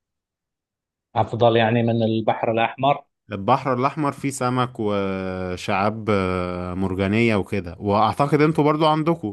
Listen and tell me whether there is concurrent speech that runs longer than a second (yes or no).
no